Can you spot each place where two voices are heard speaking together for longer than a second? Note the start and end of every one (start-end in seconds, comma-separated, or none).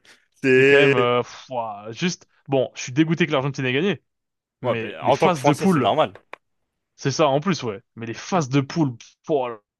4.6-5.9